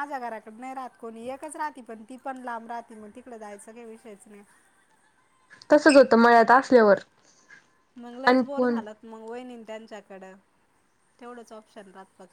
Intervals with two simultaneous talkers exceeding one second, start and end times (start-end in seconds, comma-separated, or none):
none